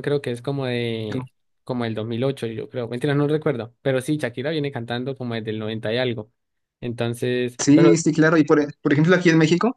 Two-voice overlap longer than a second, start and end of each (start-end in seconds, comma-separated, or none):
none